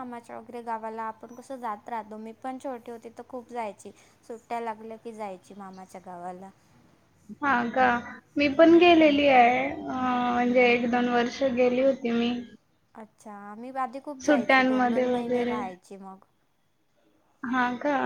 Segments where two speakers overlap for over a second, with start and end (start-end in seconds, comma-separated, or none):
14.2-15.6